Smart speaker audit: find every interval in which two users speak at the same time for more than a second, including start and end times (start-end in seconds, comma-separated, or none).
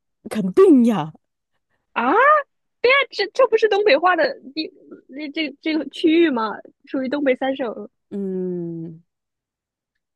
none